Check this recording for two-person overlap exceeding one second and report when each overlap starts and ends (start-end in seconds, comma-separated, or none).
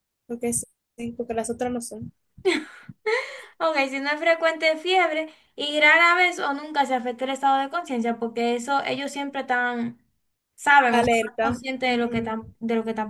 10.9-12.3